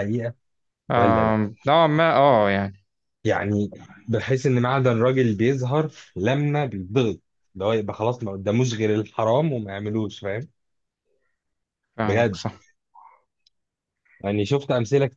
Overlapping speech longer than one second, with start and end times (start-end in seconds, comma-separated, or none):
none